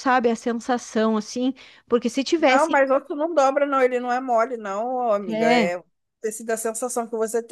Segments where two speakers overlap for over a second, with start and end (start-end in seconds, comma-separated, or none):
none